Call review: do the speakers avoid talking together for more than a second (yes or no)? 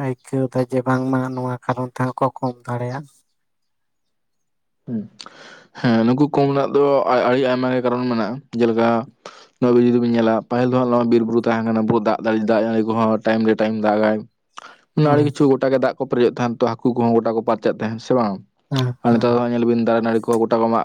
yes